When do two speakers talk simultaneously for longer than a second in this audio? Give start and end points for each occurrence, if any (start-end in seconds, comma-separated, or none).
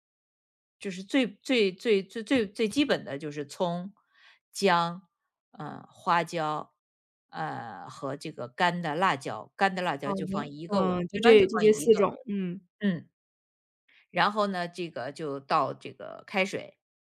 10.0-12.1